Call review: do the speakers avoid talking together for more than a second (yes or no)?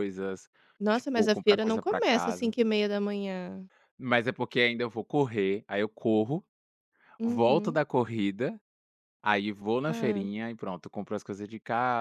no